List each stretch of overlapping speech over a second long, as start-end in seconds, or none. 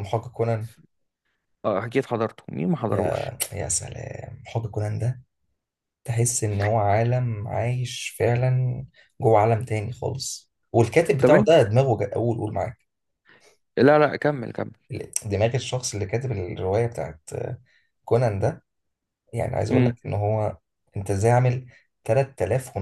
none